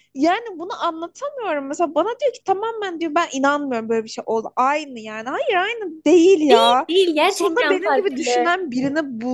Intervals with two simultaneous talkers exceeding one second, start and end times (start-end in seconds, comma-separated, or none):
7.3-8.5